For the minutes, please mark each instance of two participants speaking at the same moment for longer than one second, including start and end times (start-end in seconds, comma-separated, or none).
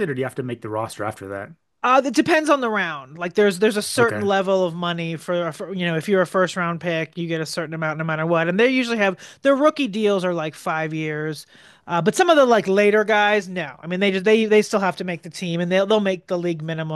none